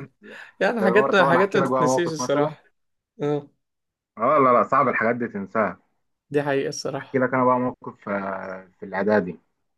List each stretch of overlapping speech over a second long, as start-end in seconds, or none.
0.8-2.5